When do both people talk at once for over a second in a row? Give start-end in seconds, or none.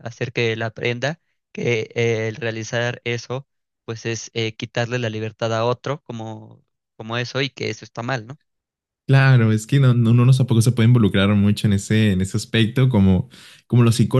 none